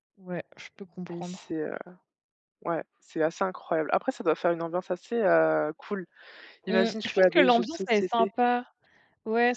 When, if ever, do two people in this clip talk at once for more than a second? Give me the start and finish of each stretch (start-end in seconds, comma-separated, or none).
6.7-8.3